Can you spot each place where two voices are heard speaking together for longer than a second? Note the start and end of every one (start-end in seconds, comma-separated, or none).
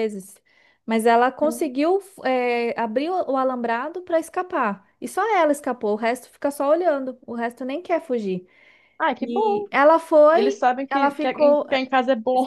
10.3-11.7